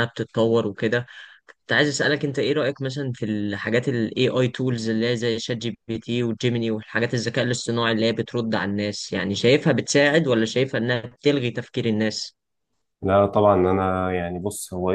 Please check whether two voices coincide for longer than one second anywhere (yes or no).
no